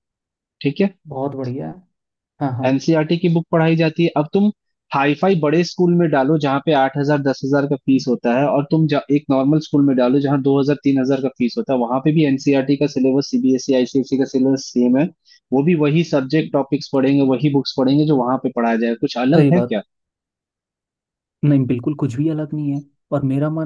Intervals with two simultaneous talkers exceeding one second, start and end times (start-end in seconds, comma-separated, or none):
none